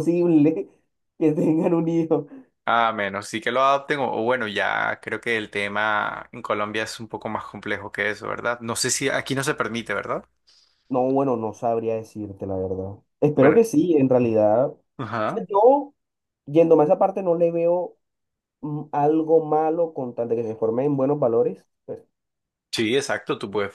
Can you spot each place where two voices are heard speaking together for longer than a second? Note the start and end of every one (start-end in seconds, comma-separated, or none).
none